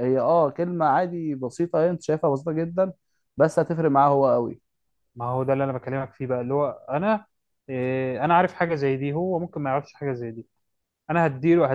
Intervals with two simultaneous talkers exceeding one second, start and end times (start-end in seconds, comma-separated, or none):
none